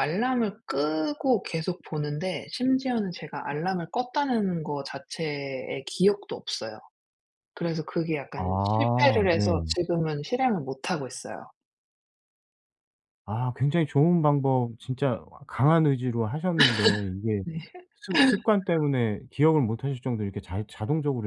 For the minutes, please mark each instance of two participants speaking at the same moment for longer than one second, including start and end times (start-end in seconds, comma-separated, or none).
8.3-9.7